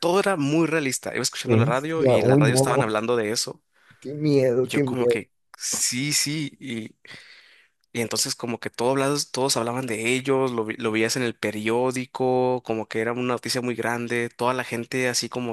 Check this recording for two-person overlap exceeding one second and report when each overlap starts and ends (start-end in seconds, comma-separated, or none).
1.4-2.9